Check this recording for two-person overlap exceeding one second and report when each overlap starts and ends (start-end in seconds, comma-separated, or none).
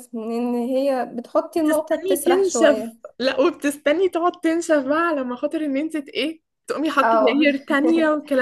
1.7-3.0